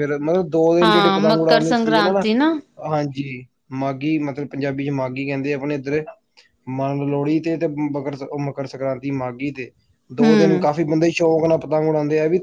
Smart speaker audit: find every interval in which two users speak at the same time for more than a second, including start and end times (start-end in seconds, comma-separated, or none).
0.8-2.2